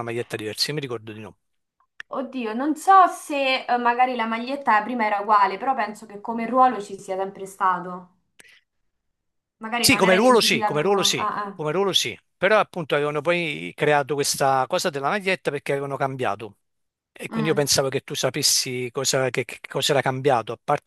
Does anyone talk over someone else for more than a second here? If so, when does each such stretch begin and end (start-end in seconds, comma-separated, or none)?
9.8-11.6